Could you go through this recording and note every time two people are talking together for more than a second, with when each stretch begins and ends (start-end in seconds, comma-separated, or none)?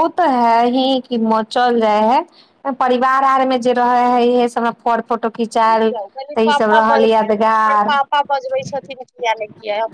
6.3-7.9